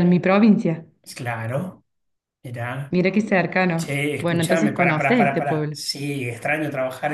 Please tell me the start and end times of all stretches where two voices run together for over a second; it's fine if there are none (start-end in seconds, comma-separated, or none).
3.8-5.8